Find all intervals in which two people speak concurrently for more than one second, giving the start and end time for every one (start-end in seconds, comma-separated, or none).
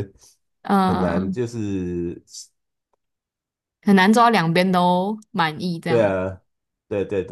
none